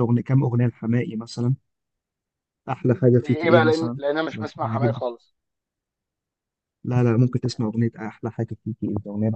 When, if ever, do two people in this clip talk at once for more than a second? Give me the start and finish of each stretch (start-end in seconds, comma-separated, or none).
3.1-5.0